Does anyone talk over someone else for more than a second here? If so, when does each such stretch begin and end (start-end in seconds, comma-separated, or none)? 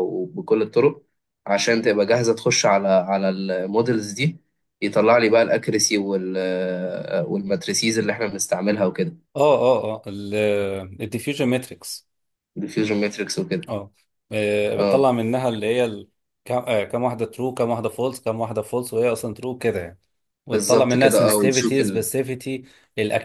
20.5-22.1